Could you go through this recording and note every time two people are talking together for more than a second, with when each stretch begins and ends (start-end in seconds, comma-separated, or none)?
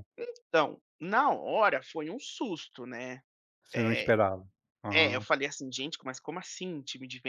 none